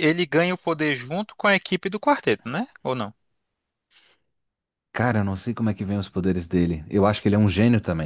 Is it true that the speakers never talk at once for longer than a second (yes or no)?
yes